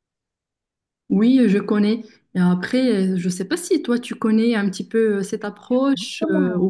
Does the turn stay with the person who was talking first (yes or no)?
no